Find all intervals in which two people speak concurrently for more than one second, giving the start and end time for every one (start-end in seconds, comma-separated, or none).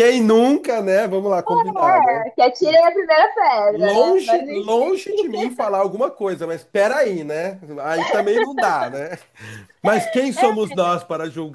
3.7-5.0